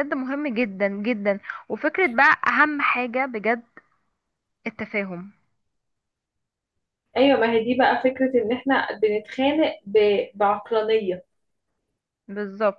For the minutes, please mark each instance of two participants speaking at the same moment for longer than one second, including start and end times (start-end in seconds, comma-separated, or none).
none